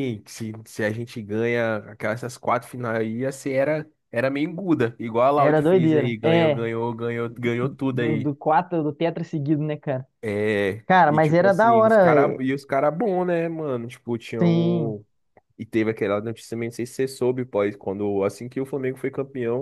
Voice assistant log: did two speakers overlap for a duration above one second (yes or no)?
yes